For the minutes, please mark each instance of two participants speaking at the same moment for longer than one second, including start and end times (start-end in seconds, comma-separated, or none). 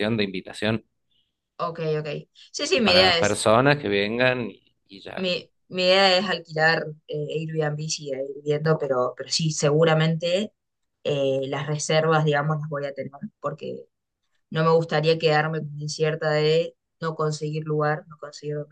none